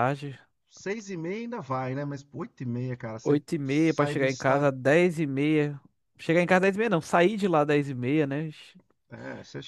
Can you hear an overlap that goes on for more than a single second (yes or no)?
yes